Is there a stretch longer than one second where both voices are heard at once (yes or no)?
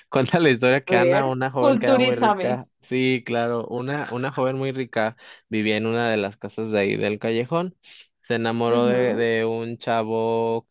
yes